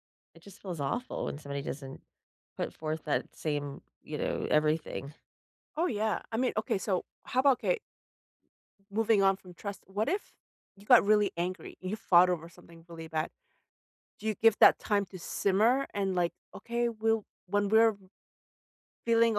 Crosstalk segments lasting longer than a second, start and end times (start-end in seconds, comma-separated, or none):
none